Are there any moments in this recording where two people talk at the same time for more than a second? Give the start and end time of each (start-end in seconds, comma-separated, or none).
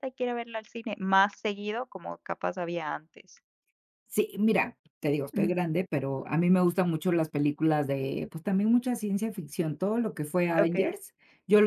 none